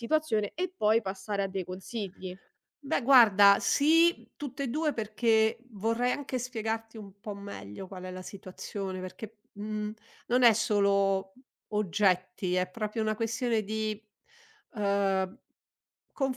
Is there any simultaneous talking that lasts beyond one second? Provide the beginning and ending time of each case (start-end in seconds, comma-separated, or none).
none